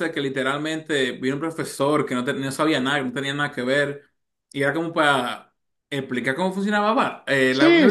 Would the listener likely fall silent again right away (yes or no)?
no